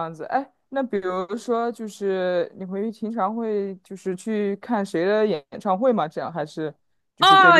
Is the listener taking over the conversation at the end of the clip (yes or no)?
yes